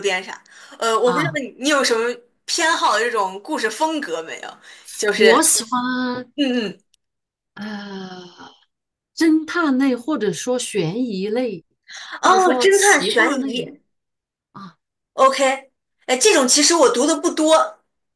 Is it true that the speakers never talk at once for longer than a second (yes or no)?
no